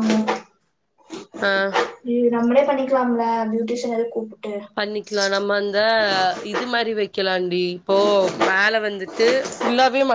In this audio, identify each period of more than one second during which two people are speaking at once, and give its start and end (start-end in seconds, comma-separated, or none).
none